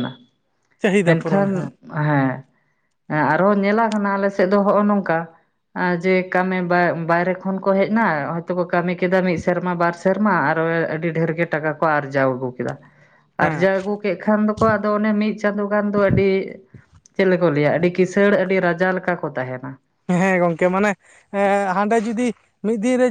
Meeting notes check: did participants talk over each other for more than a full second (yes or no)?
no